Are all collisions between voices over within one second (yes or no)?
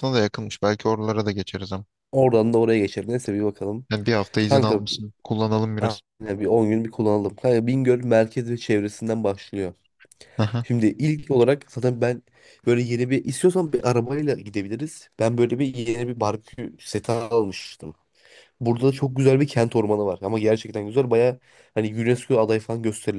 yes